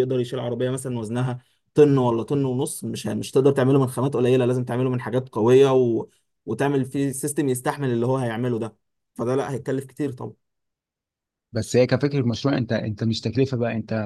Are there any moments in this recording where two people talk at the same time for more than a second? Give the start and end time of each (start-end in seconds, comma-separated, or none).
none